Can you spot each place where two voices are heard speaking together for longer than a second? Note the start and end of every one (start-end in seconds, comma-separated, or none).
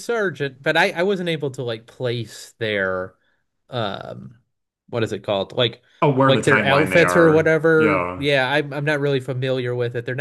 6.2-8.3